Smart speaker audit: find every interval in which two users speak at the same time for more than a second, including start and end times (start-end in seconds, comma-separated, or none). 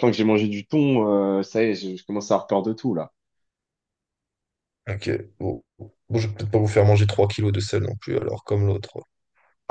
none